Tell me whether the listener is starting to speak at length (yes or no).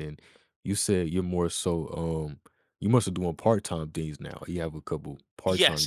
yes